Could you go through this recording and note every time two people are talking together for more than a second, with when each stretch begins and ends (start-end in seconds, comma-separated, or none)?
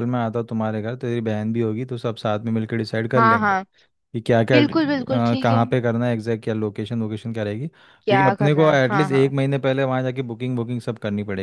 8.0-9.3